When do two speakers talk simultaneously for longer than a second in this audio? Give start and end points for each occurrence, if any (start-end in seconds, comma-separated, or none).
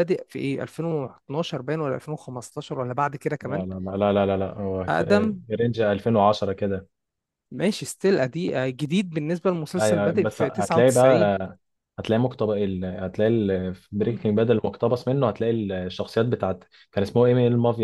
9.8-11.3